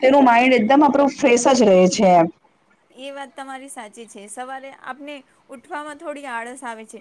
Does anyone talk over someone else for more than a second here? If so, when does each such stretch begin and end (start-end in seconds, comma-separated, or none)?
none